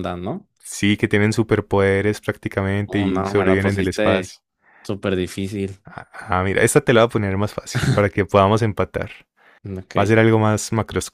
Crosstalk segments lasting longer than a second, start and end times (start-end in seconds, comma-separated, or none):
2.9-4.3